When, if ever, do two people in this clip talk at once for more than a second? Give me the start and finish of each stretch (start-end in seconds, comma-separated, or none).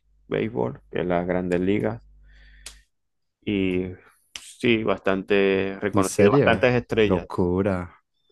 5.9-7.3